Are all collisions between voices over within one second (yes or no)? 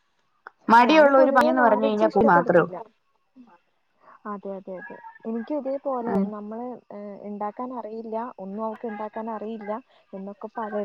no